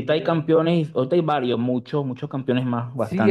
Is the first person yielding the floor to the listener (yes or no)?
yes